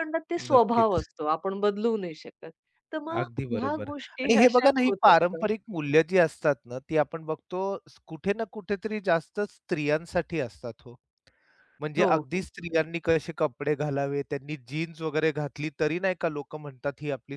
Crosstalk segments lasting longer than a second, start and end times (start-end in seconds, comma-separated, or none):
3.2-5.5